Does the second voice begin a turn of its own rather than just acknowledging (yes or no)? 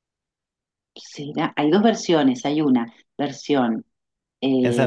yes